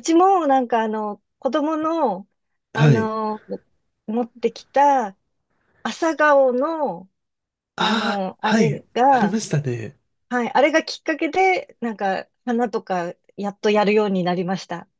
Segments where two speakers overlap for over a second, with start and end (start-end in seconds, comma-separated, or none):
7.8-9.4